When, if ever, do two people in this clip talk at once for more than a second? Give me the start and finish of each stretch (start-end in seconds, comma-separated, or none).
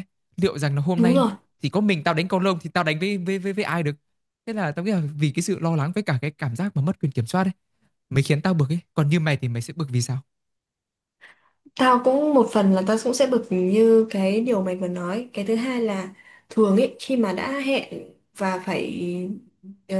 none